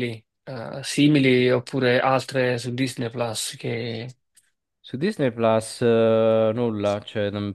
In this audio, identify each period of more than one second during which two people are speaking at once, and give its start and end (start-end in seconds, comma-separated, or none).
none